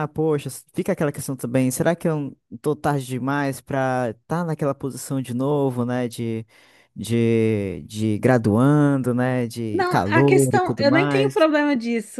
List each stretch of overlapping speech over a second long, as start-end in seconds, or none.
9.7-11.4